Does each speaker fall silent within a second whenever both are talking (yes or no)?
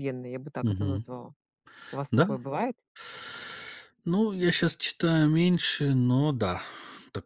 yes